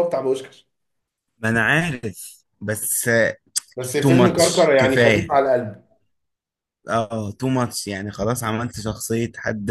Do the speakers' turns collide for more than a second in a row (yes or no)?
yes